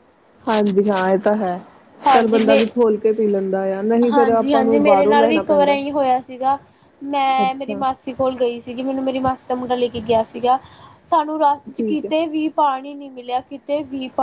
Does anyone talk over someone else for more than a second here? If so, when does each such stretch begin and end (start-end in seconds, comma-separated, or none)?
4.1-5.8